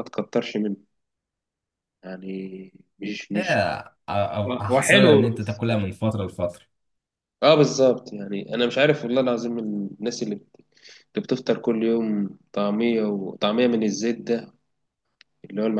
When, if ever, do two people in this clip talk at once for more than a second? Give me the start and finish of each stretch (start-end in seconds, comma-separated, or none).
4.5-5.8